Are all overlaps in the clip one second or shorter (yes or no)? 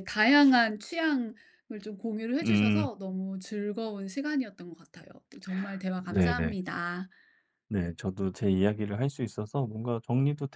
yes